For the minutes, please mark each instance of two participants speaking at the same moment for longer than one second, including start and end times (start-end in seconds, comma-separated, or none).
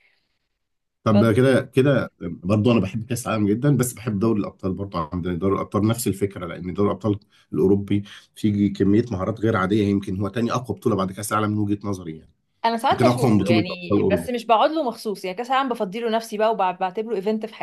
12.9-14.3